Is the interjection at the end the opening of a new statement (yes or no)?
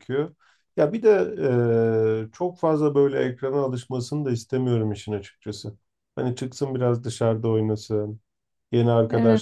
no